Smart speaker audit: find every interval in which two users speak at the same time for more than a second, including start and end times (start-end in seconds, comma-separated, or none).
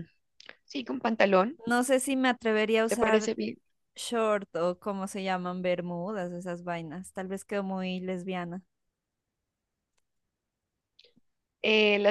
none